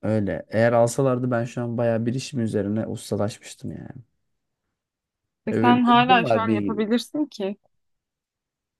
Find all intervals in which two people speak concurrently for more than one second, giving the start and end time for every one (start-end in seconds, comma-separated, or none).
5.5-6.8